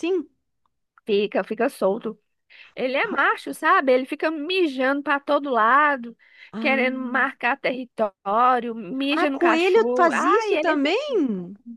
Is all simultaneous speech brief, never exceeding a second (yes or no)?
no